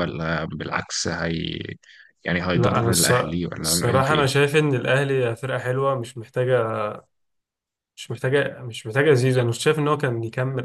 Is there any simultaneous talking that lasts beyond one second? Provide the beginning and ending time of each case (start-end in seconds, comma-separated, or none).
2.5-4.2